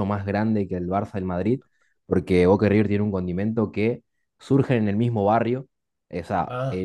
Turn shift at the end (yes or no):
no